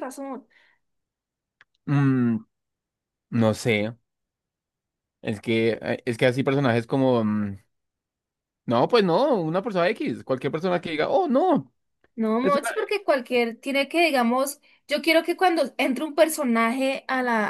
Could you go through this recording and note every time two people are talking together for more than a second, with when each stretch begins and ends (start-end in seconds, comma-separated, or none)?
none